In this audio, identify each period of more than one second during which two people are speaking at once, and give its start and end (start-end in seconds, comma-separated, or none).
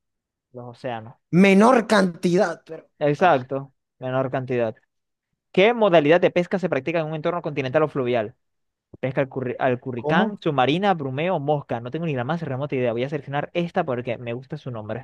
none